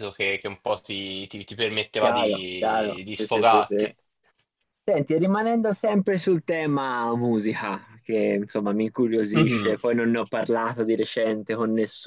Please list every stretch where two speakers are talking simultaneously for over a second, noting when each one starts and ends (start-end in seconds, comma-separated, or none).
2.0-3.9